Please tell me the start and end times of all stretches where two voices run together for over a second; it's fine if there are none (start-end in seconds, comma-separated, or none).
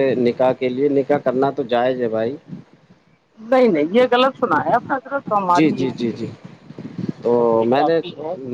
none